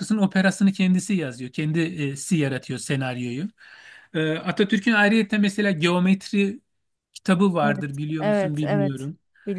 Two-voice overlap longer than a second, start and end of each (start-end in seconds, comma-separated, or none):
7.6-9.1